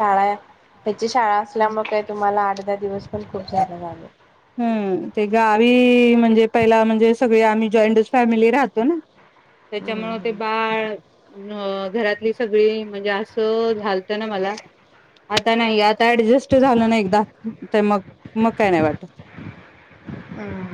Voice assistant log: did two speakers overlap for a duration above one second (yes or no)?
no